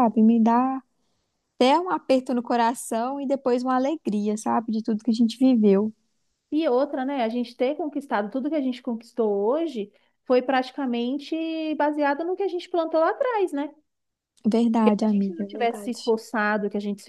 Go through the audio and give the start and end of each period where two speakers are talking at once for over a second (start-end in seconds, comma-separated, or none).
14.8-16.1